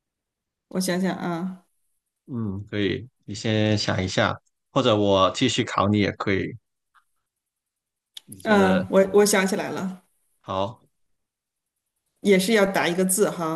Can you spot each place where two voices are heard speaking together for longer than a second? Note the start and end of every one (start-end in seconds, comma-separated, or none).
none